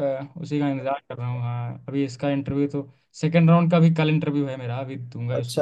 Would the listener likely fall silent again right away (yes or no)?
no